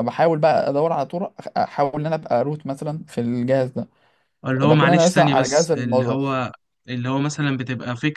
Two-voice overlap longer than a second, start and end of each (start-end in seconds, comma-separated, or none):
4.6-6.4